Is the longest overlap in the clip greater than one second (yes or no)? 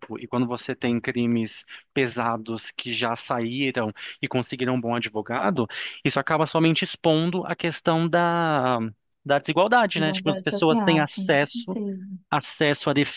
yes